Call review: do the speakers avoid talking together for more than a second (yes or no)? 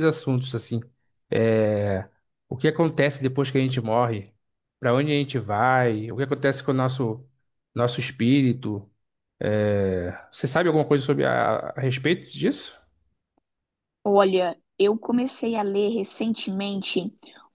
yes